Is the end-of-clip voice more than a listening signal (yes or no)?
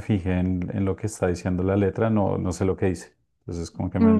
yes